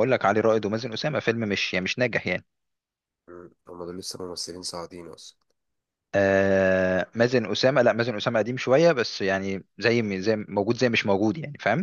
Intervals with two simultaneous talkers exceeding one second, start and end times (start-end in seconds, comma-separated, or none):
none